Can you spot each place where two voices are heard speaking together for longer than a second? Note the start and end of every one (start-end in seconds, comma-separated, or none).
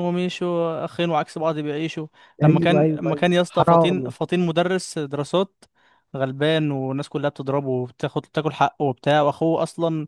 2.4-4.1